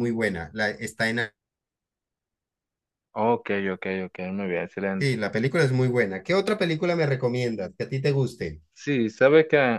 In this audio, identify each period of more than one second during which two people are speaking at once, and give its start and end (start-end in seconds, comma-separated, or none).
none